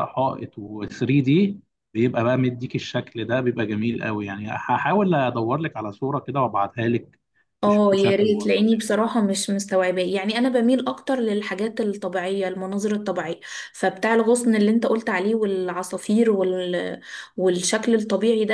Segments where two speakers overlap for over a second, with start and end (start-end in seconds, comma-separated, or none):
7.7-9.1